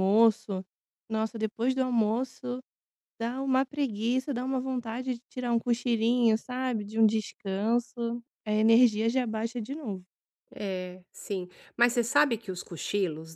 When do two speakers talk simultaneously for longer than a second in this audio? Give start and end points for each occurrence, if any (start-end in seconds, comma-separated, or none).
none